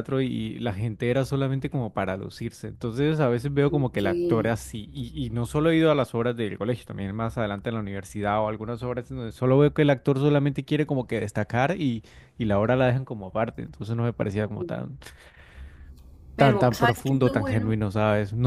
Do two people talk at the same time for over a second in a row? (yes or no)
yes